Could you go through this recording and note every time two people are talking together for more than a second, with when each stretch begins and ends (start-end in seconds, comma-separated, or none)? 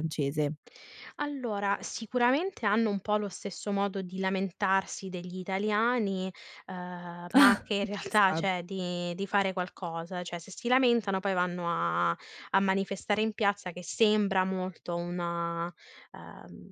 7.3-8.6